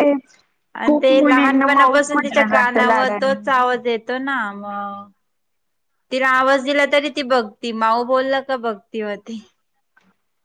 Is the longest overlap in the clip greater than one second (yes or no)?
yes